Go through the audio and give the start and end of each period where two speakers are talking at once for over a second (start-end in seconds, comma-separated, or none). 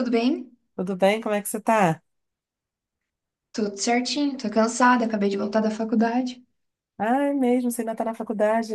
none